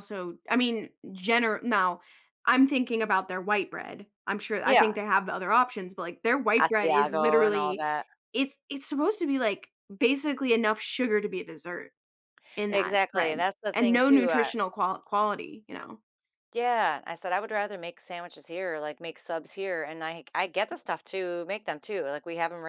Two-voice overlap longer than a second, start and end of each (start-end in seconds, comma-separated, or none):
6.6-7.8, 12.7-14.5